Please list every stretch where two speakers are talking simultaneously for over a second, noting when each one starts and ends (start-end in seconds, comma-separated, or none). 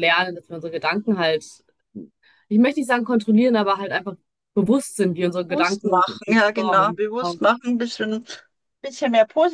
5.5-7.0